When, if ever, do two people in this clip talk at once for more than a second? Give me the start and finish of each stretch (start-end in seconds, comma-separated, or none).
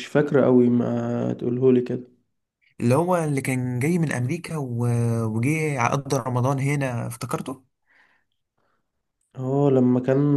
none